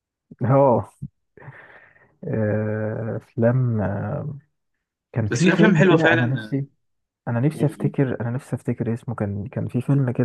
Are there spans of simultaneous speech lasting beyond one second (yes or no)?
yes